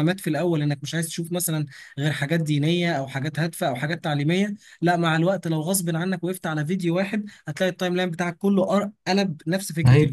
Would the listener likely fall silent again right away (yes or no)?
no